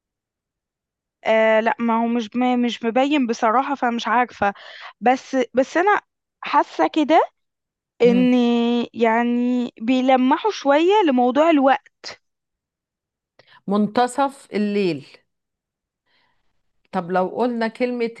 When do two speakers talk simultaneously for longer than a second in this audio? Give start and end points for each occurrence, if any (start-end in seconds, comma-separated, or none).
none